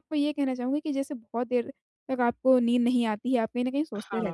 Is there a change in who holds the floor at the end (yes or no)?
no